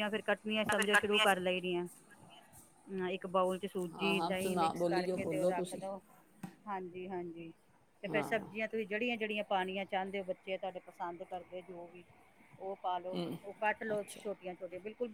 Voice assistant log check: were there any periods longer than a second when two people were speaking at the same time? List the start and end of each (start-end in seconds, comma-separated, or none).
3.9-5.8